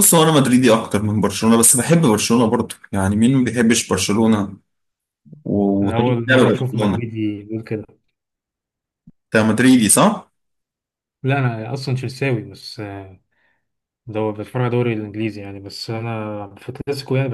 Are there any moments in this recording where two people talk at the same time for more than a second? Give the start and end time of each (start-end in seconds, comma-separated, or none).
5.8-7.1